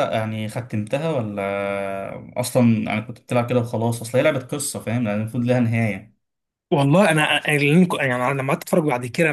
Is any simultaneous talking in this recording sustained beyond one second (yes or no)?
no